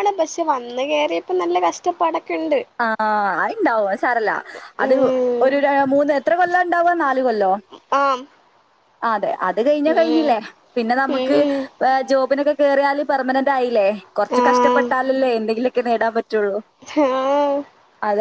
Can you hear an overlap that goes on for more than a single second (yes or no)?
no